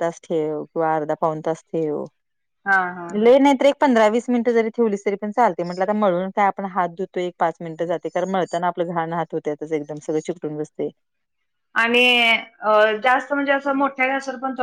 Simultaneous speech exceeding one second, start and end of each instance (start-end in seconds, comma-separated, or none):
none